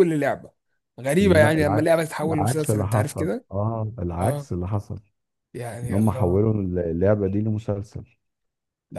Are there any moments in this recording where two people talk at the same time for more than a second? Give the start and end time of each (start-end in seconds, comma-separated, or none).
1.2-3.5